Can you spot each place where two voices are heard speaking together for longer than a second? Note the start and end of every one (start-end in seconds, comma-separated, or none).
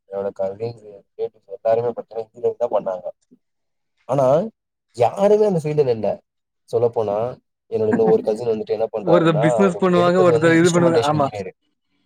9.1-11.3